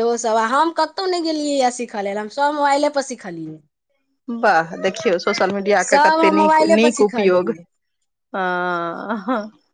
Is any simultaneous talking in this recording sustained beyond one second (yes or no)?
yes